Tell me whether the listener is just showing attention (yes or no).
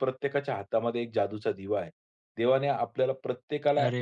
yes